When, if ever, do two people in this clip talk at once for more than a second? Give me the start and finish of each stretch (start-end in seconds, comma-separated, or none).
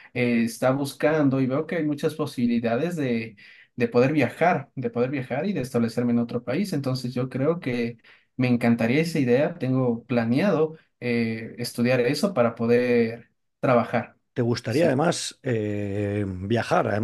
none